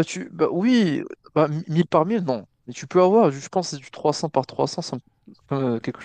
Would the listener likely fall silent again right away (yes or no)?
no